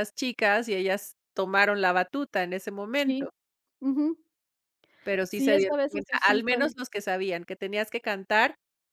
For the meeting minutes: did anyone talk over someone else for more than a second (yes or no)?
yes